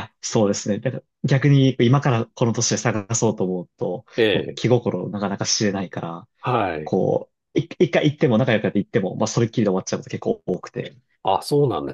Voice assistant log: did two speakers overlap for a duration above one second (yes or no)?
no